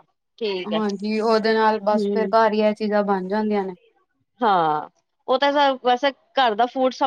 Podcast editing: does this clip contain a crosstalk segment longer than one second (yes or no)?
no